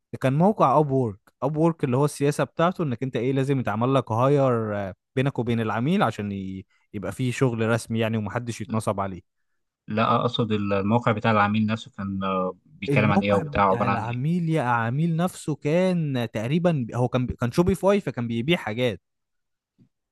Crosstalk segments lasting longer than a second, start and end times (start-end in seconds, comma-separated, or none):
12.9-14.2